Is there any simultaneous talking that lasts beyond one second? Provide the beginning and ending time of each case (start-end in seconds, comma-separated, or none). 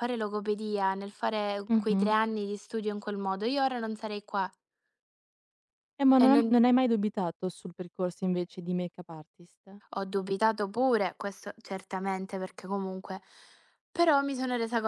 none